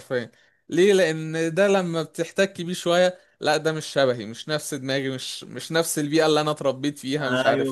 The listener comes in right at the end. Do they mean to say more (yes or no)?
yes